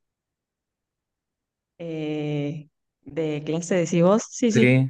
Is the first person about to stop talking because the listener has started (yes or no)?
yes